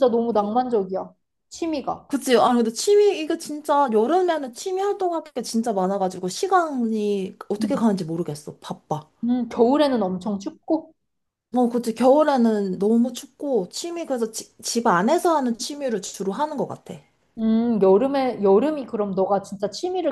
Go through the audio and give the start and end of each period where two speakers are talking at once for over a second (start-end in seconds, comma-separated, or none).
none